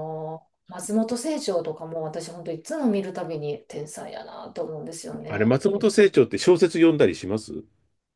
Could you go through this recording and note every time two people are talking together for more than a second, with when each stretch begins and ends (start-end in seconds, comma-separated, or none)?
none